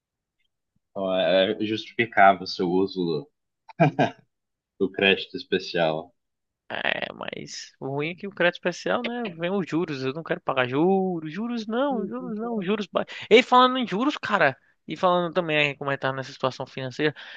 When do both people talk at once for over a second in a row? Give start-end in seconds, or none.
none